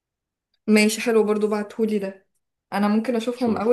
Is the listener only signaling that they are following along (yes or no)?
yes